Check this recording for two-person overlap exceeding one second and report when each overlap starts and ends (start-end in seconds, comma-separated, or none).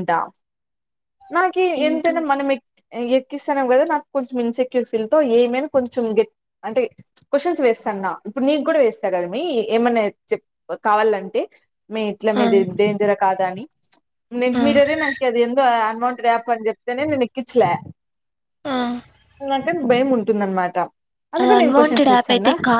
none